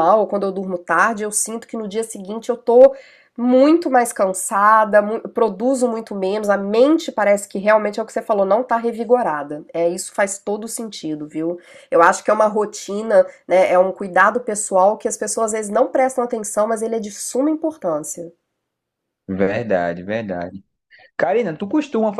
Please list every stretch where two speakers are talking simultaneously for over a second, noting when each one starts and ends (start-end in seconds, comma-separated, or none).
none